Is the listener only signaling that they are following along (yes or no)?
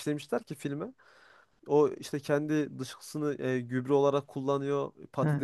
yes